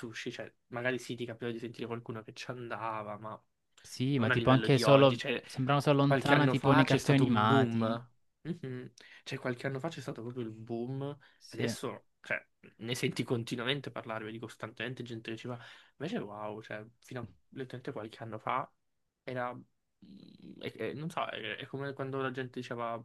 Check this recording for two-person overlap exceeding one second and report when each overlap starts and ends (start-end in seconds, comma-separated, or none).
4.1-5.4, 6.0-8.0